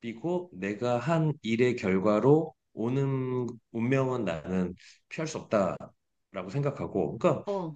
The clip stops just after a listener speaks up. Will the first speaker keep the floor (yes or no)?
yes